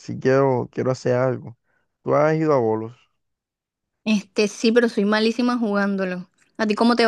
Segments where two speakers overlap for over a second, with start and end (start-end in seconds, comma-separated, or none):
none